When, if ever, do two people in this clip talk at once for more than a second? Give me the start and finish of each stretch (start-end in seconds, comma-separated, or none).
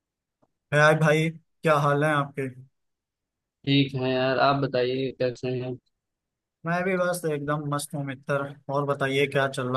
none